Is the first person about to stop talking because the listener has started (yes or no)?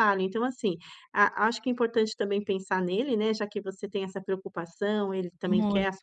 no